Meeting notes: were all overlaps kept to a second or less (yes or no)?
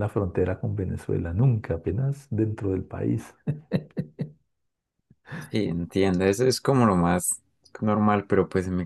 yes